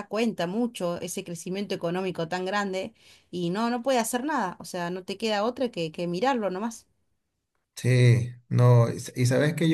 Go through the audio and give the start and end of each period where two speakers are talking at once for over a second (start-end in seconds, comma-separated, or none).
none